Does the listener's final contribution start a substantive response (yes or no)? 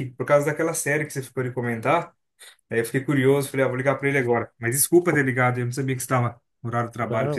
yes